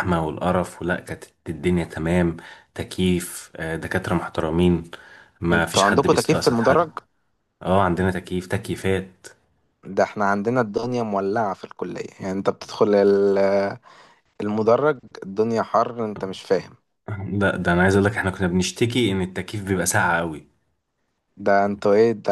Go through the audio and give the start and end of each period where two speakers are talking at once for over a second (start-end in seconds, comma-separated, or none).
5.5-6.9